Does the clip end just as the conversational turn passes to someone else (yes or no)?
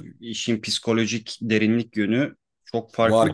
yes